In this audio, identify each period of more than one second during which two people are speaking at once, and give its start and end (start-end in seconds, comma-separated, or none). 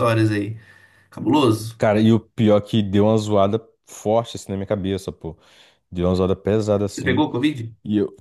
none